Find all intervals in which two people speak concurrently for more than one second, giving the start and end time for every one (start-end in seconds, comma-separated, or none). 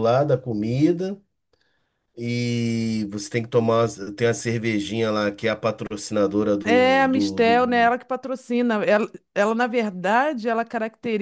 6.6-7.9